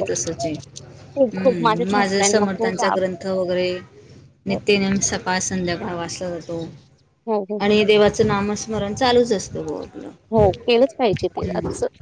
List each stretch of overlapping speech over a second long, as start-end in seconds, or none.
1.4-3.0